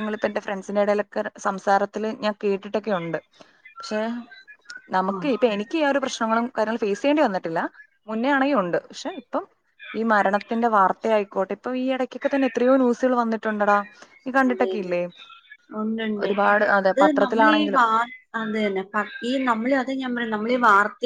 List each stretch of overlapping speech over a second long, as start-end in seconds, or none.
16.2-17.8